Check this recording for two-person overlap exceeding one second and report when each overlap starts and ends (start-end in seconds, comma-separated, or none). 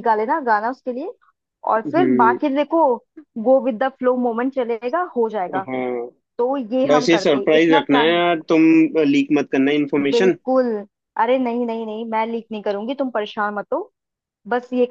6.9-8.2